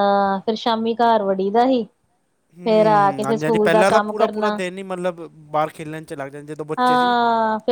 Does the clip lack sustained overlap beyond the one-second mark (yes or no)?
no